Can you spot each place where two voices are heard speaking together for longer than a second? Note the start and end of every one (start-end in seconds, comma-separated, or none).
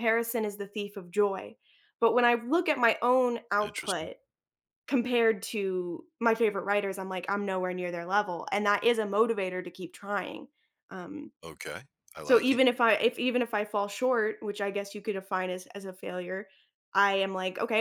none